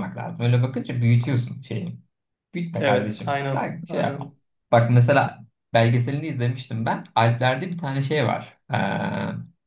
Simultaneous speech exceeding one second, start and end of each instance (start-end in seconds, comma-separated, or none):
2.8-4.3